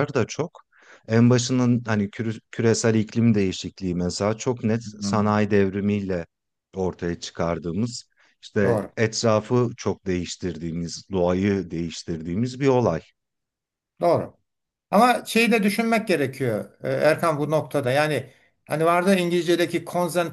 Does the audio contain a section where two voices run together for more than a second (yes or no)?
no